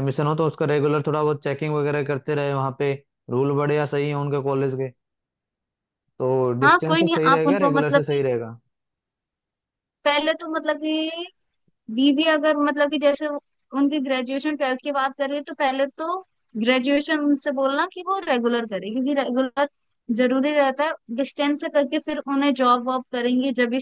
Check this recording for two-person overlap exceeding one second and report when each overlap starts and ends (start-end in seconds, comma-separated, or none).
6.6-8.2